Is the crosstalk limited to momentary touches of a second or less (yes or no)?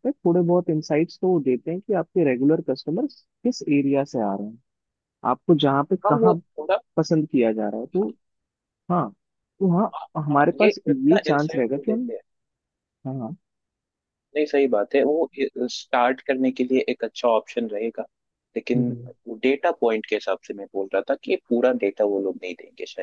no